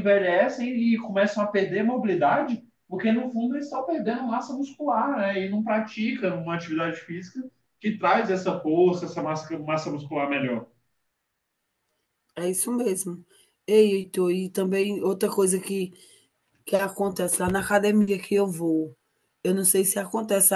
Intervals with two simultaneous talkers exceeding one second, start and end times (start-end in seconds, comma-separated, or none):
none